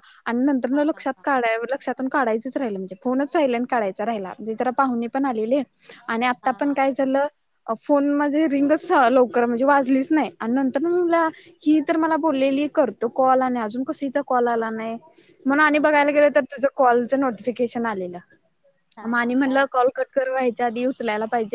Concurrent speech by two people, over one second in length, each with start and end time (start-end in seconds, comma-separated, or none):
none